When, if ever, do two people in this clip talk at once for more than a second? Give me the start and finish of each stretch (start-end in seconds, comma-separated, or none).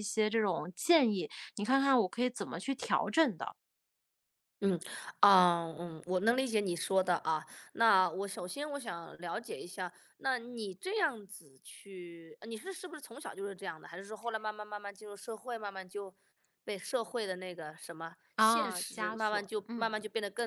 18.4-19.9